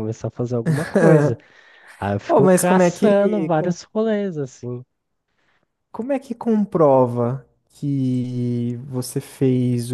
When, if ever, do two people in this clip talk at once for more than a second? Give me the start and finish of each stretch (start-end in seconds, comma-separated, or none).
2.3-3.8